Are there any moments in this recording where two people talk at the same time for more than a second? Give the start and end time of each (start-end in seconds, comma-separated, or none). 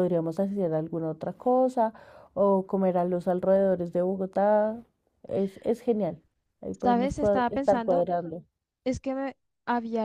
6.8-8.1